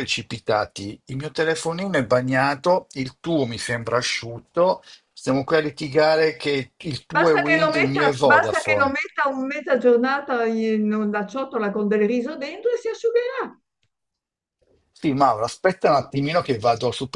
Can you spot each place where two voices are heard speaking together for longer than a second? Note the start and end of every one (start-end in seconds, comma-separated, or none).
7.1-8.9